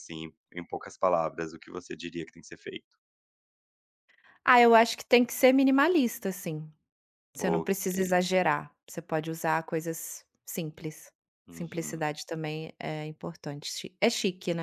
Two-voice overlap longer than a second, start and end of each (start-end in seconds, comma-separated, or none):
none